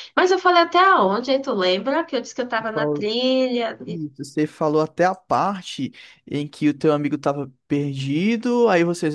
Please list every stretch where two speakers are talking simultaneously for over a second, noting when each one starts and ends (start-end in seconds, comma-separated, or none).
none